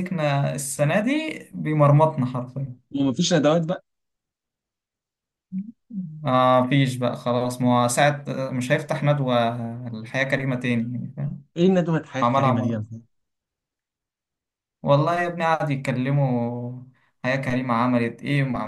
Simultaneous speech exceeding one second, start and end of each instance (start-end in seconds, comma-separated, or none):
none